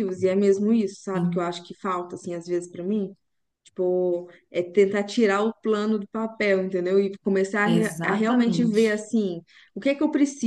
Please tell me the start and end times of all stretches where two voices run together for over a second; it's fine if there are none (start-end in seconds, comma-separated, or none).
7.7-9.0